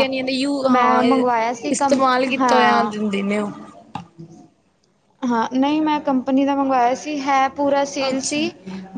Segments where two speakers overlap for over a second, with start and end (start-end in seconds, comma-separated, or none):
1.7-3.0